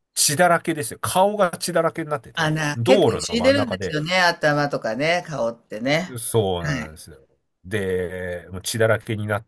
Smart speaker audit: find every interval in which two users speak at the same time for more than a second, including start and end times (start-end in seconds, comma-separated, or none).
2.4-4.0